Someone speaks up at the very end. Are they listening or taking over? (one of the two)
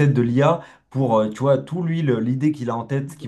listening